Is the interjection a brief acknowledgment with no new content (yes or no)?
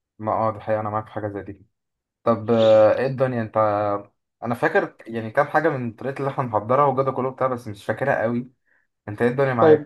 no